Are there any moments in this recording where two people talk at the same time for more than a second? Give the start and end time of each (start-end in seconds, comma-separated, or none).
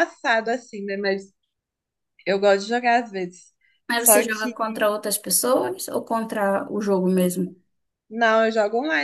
none